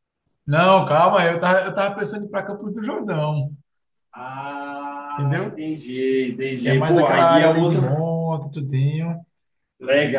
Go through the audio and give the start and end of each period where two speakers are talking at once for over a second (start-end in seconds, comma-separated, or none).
6.6-8.0